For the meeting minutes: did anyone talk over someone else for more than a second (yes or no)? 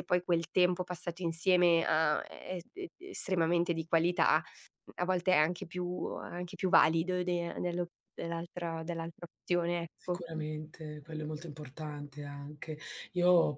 no